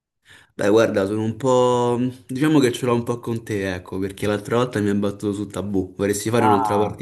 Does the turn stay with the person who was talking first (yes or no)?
no